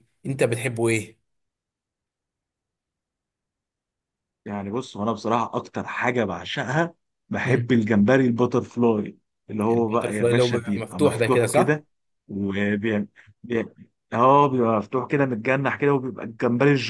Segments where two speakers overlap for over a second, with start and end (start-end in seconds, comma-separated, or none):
9.7-11.8